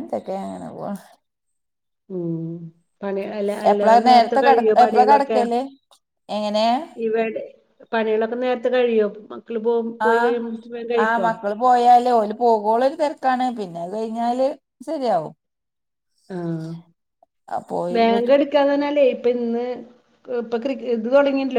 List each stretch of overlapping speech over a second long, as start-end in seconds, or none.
3.7-5.4